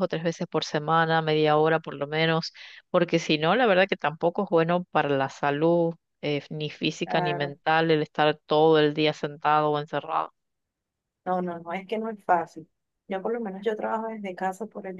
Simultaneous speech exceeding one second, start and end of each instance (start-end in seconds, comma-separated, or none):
none